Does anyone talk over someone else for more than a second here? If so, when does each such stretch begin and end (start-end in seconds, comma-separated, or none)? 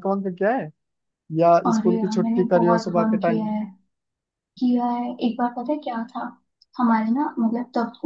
1.7-3.4